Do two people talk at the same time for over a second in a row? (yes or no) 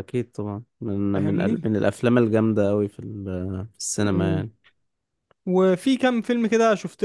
no